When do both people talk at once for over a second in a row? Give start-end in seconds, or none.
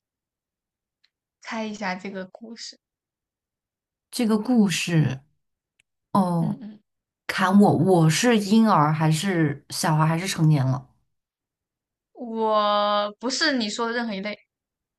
none